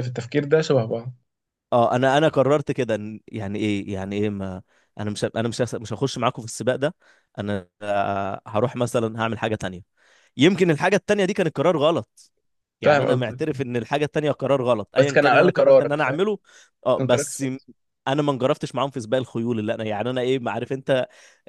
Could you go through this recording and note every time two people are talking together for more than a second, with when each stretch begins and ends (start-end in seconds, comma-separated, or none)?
15.0-16.2